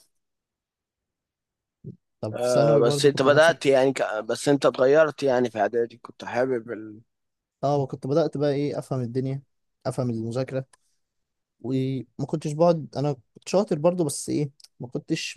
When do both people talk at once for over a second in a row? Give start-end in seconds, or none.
2.3-3.6